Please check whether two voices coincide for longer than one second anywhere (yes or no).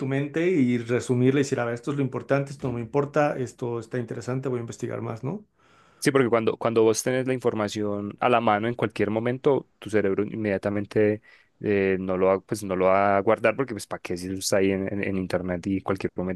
no